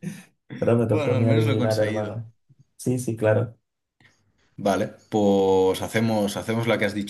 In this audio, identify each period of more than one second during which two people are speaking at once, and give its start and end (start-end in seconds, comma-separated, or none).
0.9-2.2